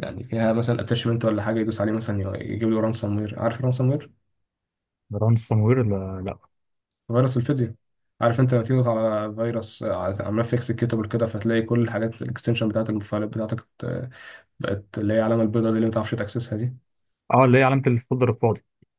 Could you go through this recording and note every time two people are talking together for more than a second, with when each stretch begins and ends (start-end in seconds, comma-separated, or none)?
none